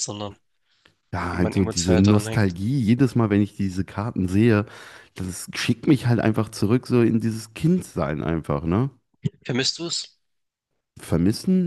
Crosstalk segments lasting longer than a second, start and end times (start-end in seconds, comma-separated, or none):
1.3-2.5